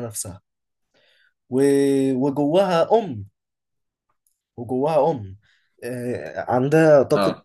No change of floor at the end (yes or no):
yes